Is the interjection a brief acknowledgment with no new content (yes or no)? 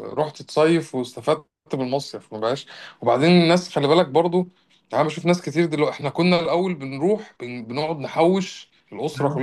yes